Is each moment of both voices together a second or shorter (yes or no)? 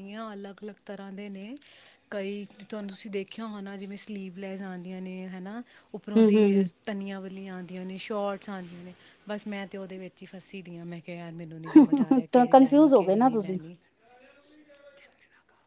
no